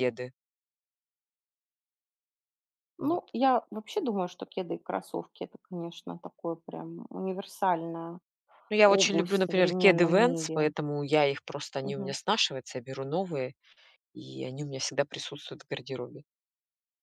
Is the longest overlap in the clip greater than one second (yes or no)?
yes